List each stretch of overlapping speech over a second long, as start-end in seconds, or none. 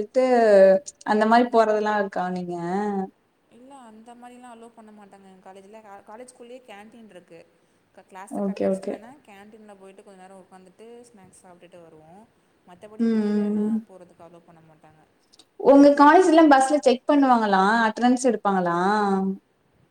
none